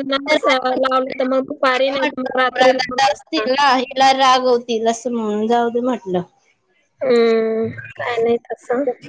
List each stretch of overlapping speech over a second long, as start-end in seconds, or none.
1.9-3.5